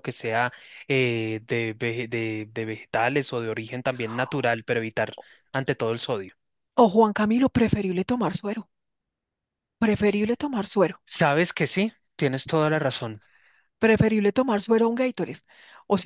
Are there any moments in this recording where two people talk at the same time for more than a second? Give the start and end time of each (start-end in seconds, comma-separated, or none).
none